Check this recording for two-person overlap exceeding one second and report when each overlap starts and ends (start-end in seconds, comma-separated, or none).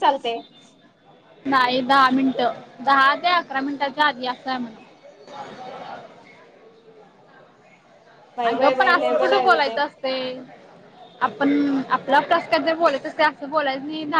8.5-9.8